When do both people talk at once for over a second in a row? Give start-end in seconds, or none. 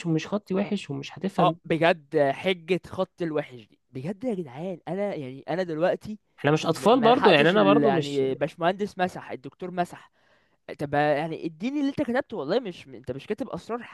6.8-8.2